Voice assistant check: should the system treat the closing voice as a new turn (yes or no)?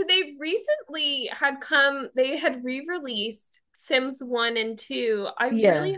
no